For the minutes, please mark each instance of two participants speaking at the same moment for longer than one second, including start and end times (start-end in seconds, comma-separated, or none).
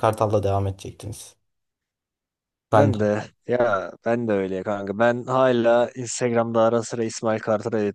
none